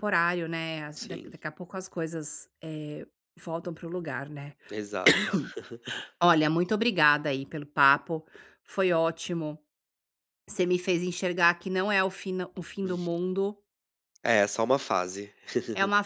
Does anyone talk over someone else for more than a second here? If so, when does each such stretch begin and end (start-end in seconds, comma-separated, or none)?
none